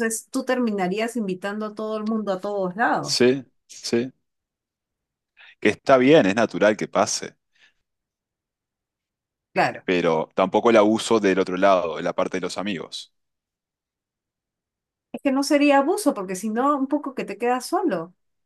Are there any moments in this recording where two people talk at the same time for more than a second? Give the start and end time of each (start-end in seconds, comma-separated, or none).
none